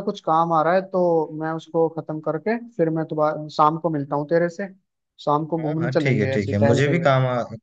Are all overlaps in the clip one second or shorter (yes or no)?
no